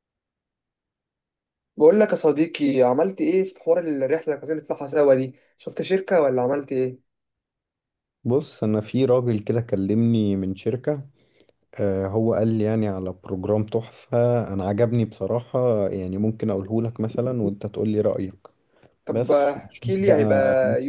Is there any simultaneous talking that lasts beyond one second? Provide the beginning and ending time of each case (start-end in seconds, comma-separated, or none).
19.1-20.4